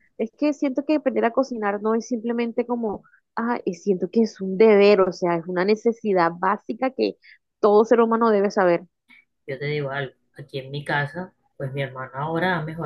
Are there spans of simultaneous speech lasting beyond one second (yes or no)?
no